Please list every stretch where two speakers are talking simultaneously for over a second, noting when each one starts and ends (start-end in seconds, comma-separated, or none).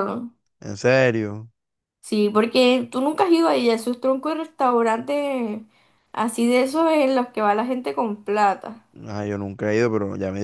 none